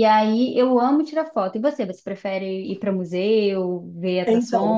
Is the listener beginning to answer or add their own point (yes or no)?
yes